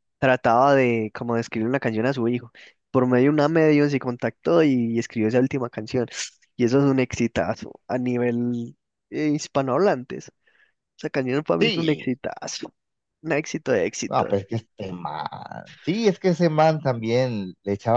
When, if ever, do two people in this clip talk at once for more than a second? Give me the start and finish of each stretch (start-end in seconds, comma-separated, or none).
none